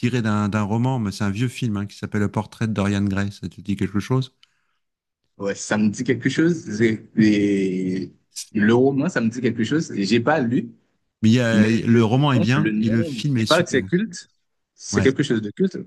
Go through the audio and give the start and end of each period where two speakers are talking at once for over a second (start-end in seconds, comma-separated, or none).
11.5-13.8